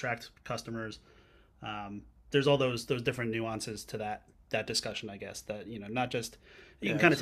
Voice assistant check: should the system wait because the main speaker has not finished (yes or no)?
yes